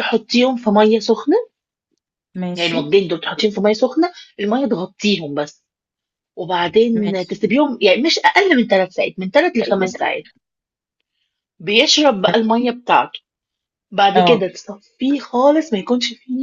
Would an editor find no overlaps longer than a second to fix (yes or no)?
yes